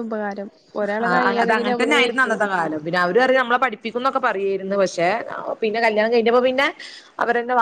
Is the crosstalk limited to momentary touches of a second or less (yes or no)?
no